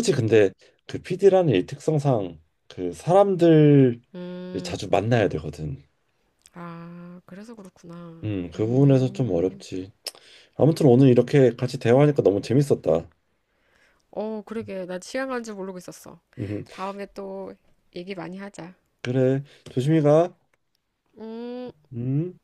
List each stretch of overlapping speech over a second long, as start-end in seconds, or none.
8.2-9.6